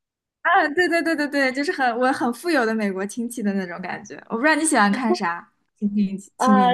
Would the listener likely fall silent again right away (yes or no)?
no